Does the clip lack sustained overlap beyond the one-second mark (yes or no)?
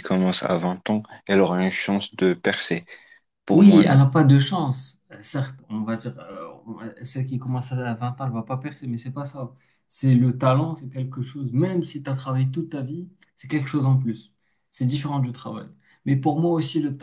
yes